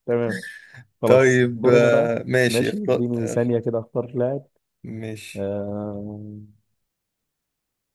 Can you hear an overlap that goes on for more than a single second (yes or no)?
yes